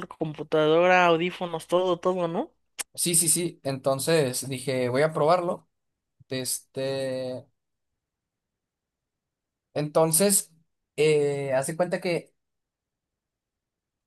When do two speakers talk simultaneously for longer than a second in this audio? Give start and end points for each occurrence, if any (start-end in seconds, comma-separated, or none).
none